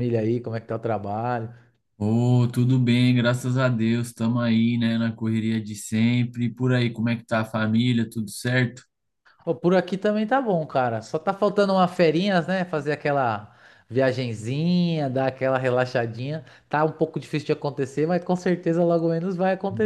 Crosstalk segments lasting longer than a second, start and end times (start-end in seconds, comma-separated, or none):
none